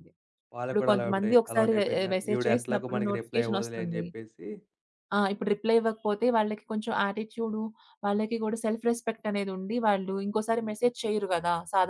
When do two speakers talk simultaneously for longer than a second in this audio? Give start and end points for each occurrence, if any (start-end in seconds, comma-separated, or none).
0.7-4.0